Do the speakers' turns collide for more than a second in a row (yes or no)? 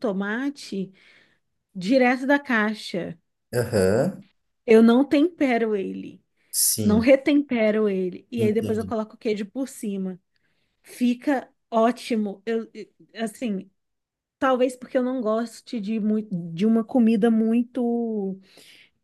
no